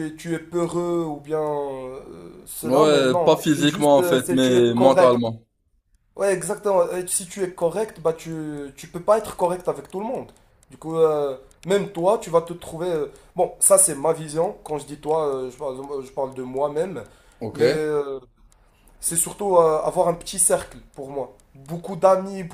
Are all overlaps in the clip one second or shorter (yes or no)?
no